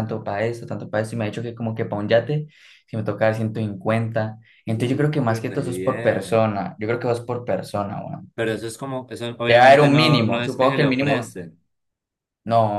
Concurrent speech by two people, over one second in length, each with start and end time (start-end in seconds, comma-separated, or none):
4.7-6.5, 9.5-11.3